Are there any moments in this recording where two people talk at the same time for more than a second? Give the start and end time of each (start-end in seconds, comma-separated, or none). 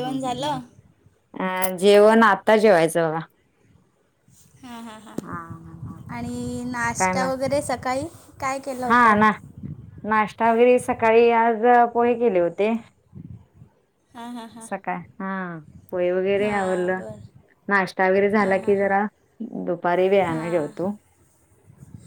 none